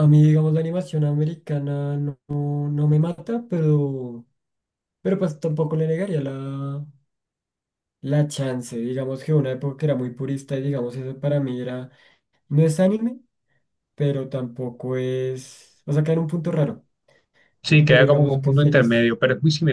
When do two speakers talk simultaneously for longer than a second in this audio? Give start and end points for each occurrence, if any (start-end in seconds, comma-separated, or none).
17.8-19.1